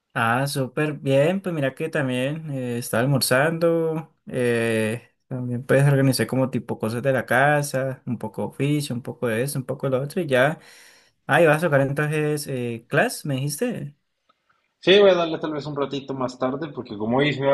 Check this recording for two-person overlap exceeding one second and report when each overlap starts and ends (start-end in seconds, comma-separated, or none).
none